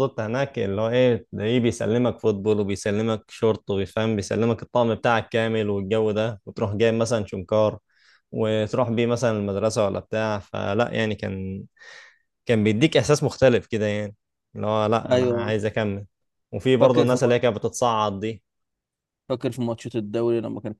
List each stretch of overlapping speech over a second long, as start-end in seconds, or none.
none